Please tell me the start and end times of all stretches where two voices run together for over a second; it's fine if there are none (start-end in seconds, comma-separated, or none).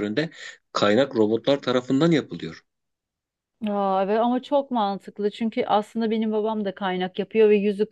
none